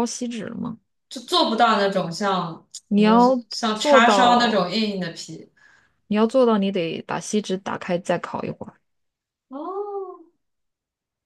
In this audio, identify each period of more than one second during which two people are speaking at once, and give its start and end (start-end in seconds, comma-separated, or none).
2.9-4.7